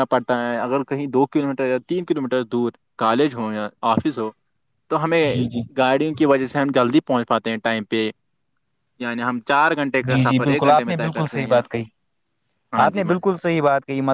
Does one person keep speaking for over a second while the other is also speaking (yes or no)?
yes